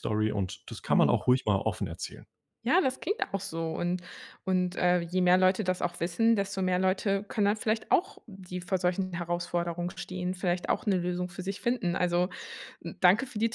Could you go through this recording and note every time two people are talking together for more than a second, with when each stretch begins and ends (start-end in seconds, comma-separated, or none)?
none